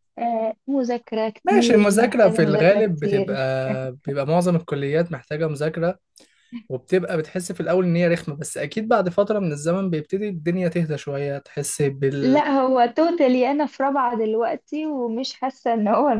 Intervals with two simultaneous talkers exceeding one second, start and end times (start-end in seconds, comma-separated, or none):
1.4-3.4